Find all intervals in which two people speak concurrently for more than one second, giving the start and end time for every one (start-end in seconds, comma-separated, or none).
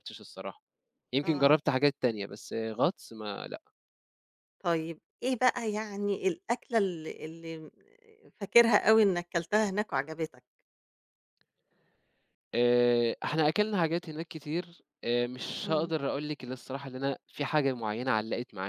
none